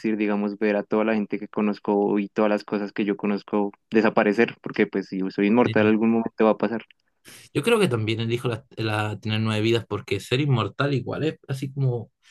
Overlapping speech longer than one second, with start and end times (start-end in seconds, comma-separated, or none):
none